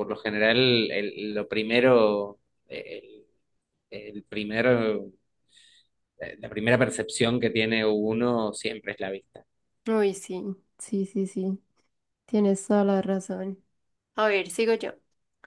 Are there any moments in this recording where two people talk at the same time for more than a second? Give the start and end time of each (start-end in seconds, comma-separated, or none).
none